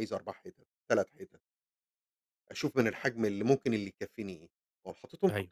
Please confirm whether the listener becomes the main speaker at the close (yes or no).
no